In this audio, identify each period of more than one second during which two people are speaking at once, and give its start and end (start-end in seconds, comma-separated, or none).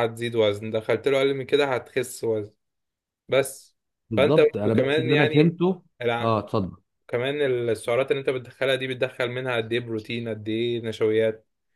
4.2-5.6